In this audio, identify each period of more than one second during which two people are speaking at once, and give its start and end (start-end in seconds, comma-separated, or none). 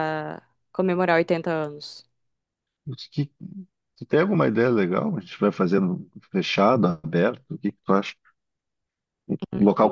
none